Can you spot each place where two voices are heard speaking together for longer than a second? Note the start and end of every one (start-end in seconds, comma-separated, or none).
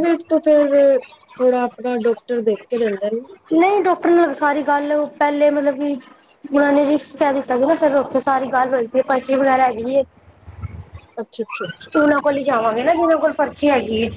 none